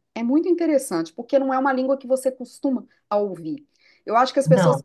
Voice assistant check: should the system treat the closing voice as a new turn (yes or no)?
no